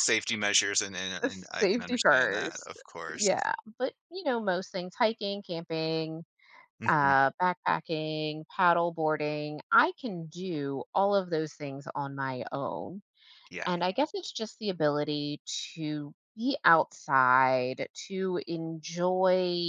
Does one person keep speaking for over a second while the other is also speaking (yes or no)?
yes